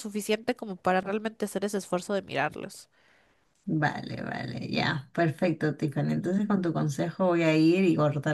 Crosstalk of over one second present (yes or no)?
no